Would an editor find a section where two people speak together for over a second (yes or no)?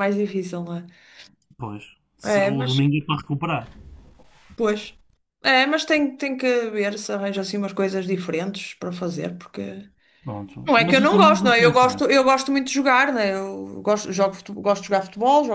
yes